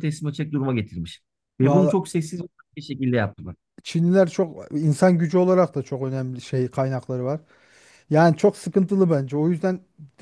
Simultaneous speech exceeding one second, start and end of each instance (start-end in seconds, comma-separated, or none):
none